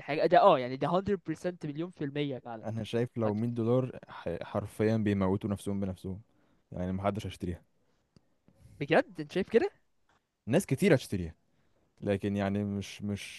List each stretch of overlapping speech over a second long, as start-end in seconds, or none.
none